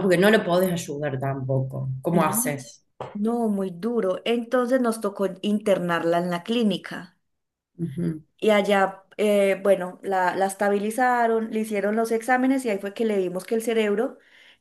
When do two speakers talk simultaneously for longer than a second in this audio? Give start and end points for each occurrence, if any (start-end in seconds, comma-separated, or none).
none